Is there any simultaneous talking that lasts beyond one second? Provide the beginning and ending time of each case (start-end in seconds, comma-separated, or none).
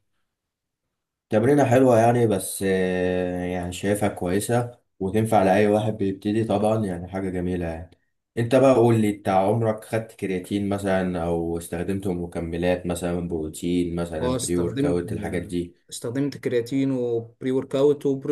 14.2-15.5